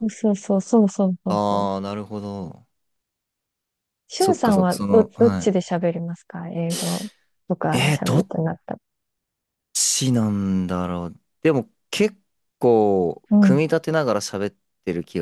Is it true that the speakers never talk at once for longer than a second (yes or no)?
no